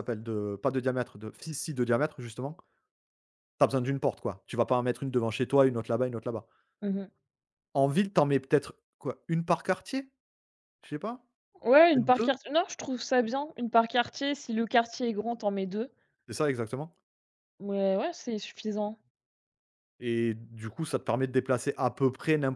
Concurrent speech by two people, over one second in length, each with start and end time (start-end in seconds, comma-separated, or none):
none